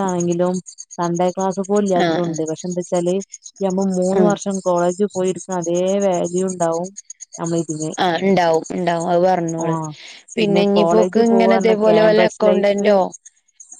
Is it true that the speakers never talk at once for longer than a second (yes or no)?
no